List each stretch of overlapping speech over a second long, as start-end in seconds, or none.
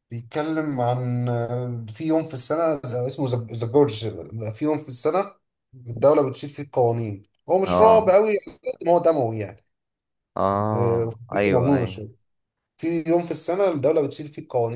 10.7-12.0